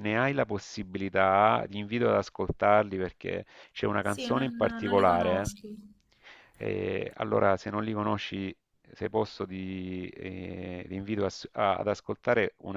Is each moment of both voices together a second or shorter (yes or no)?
no